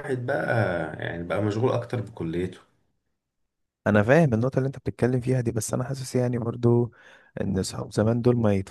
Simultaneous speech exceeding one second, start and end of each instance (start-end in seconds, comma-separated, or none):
none